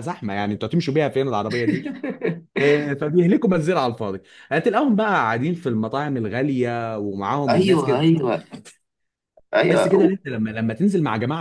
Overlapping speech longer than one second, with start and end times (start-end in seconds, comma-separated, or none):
none